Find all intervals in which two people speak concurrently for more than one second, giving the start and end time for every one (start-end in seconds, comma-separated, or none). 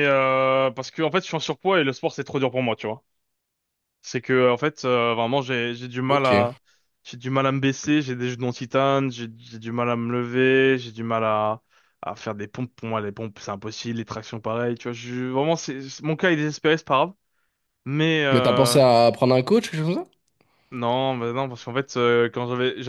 none